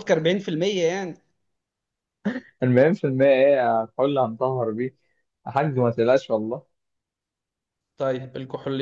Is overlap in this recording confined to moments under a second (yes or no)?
yes